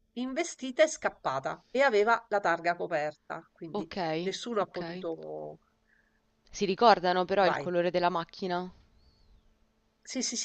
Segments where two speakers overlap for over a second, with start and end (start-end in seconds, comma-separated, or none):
none